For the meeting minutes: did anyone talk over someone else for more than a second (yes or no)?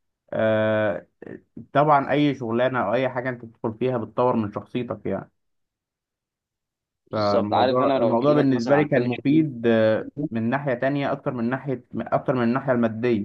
yes